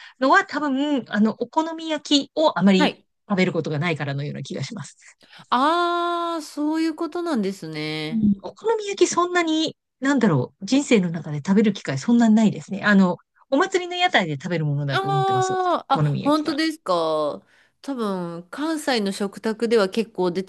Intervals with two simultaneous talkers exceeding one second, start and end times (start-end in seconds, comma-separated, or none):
14.9-16.6